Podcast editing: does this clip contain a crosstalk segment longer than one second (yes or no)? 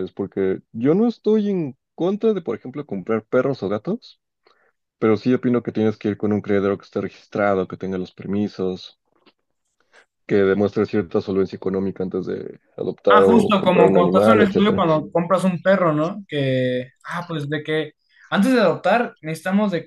yes